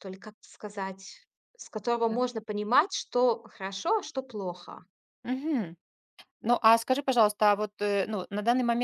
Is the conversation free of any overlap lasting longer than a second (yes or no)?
yes